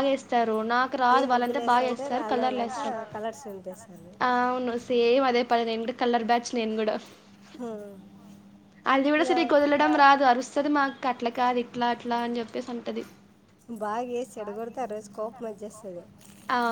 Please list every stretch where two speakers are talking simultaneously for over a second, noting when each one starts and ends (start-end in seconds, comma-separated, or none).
1.1-2.9